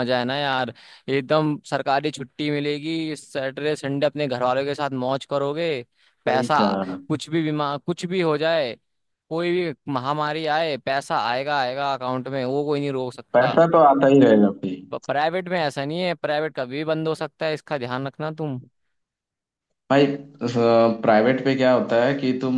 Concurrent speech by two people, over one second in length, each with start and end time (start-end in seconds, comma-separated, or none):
none